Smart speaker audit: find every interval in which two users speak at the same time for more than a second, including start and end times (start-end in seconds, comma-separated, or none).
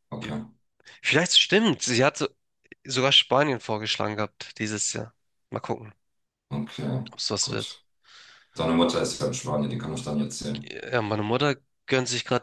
none